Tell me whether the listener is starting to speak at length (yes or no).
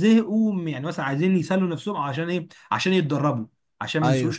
no